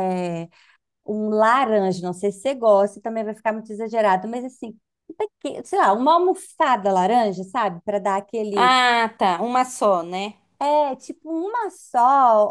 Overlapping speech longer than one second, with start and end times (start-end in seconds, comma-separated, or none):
none